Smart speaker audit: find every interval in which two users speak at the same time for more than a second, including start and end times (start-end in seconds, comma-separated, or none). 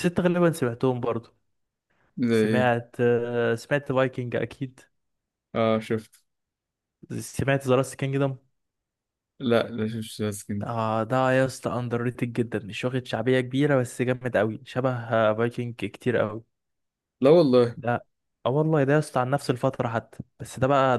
none